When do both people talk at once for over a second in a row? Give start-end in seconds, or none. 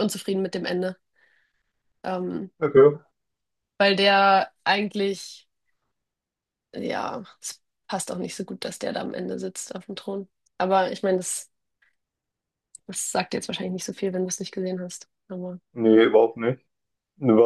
none